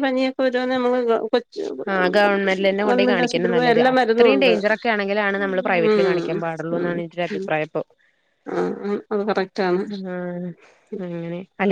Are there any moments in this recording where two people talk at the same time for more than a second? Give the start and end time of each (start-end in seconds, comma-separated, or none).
2.8-4.5